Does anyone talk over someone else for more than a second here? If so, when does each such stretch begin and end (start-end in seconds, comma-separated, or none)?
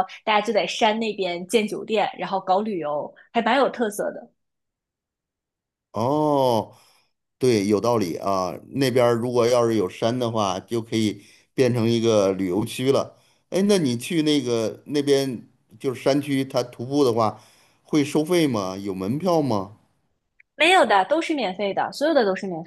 none